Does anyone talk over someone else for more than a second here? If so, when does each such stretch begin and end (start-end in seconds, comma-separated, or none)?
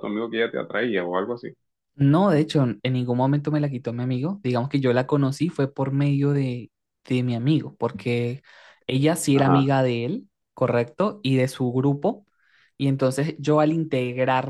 none